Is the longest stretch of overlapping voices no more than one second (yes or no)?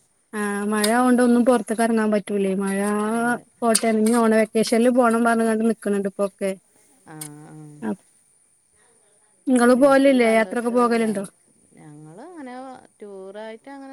no